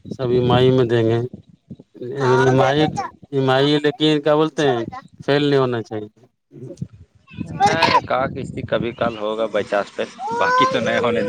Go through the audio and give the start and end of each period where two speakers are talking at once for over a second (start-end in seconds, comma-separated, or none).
none